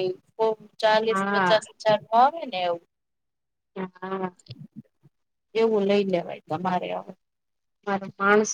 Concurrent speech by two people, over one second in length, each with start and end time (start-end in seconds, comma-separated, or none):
none